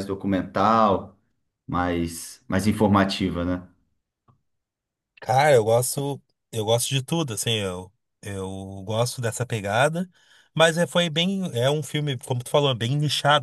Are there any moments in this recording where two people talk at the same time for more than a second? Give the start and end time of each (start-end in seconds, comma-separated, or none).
none